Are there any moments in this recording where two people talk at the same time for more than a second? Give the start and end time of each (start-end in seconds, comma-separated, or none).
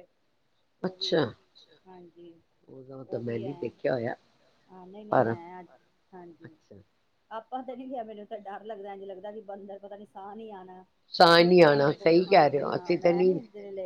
11.2-13.3